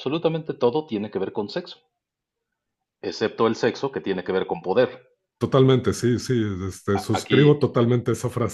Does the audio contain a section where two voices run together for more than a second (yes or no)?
no